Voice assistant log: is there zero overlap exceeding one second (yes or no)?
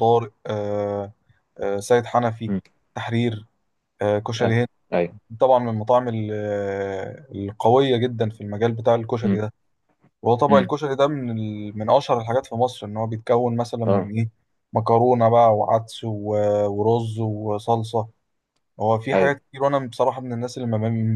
yes